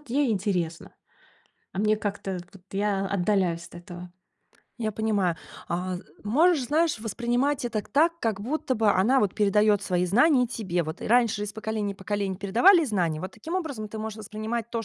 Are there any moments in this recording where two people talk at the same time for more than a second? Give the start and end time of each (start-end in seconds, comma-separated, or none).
none